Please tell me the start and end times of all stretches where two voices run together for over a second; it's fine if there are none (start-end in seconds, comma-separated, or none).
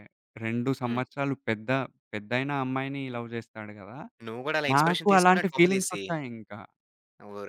4.8-6.0